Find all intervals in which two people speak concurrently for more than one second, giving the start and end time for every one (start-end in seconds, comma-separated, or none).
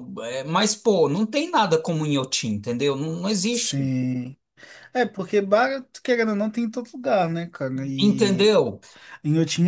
none